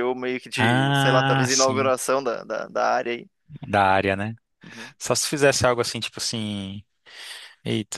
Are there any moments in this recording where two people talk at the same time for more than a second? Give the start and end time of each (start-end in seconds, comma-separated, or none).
0.6-1.9